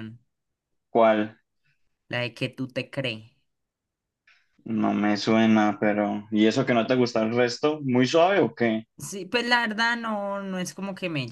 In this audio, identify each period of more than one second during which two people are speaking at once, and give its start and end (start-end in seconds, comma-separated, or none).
none